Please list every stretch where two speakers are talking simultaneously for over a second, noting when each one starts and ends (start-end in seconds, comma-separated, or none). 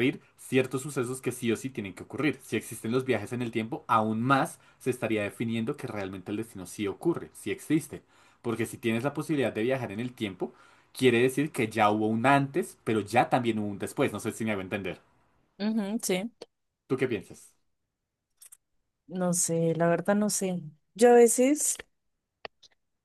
none